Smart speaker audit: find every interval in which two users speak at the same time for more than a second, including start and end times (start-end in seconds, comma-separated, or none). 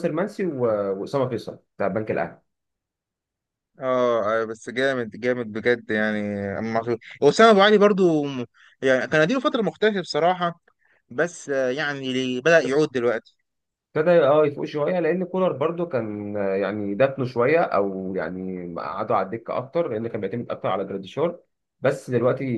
none